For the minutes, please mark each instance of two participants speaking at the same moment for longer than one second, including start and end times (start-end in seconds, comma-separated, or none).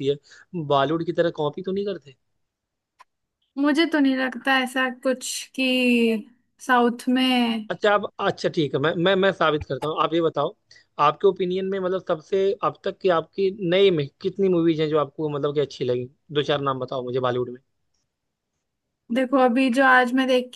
none